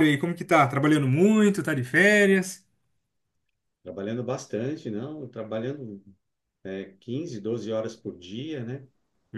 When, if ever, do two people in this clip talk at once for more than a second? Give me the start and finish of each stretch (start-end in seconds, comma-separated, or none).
none